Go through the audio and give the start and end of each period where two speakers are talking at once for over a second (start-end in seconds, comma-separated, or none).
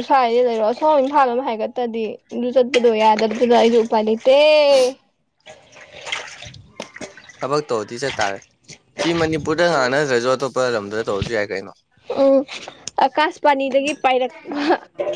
none